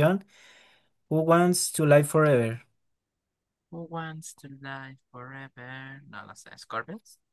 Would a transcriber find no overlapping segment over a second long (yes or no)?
yes